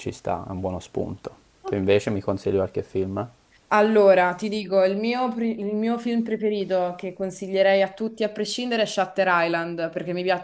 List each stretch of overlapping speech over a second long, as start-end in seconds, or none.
none